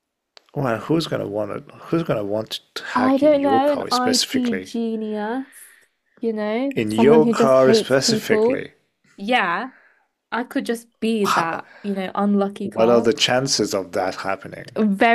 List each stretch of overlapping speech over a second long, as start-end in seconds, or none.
2.9-4.7, 6.8-8.7